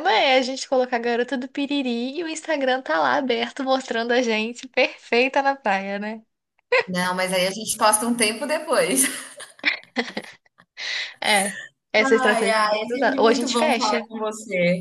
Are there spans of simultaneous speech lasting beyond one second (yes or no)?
yes